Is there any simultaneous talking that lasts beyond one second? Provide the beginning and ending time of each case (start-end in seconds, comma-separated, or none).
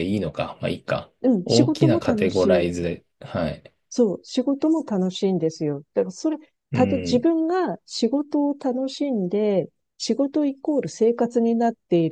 1.2-2.7